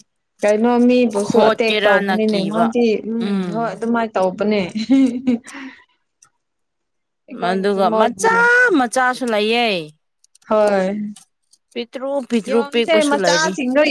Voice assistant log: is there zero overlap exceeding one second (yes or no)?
no